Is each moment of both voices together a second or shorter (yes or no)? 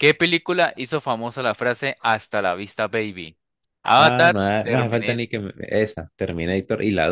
no